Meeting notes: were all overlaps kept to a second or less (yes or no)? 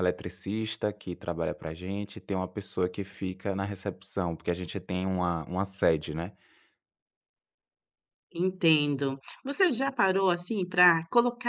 yes